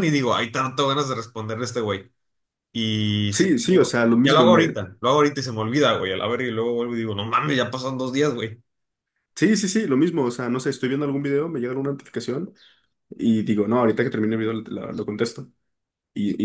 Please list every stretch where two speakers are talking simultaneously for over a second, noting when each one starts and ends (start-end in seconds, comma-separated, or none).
3.3-4.8